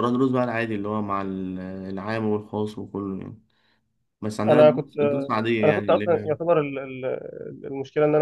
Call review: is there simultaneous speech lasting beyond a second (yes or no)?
yes